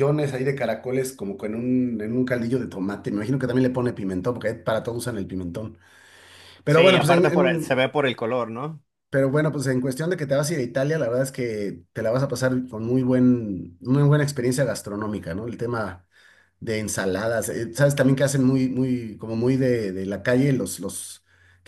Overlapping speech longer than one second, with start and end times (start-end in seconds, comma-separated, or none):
6.7-7.8